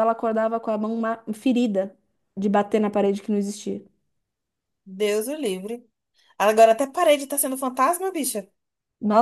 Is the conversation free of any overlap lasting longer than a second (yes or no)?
yes